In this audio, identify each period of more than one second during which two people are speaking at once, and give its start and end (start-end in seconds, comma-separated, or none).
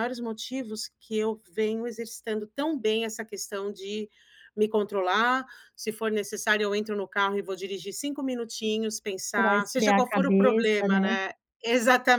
9.3-11.1